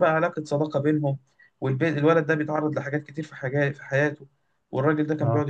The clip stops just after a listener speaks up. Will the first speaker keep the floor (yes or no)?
yes